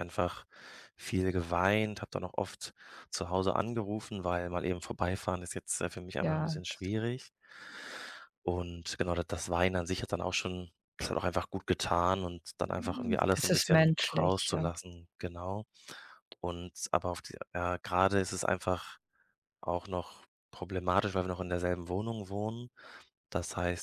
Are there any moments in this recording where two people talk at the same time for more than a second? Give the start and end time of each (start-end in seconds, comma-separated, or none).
13.3-14.7